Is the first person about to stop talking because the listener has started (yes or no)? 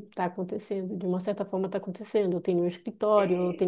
no